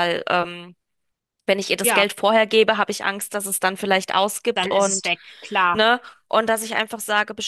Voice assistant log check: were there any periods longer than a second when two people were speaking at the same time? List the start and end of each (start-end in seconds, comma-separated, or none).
none